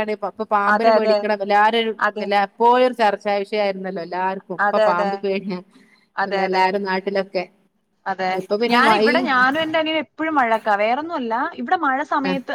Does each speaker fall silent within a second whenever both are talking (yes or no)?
yes